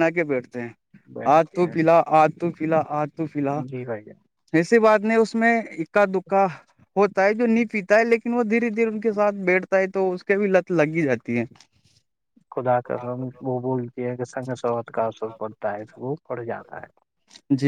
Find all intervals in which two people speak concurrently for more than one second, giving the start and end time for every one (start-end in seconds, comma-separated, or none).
none